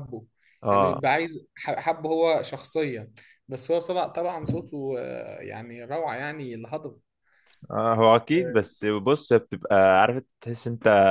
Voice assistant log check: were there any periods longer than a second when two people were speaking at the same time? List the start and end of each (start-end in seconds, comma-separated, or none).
none